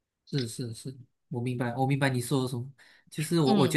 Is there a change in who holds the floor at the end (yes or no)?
no